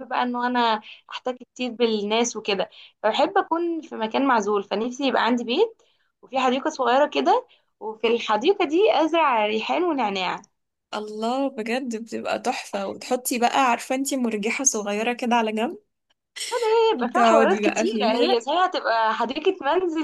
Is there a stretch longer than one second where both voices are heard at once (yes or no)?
yes